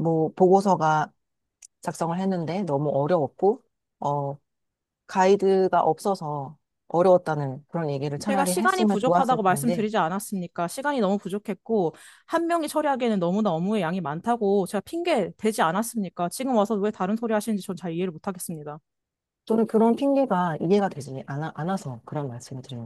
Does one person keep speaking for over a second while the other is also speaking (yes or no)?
yes